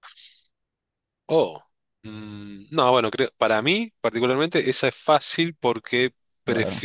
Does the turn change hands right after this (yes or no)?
no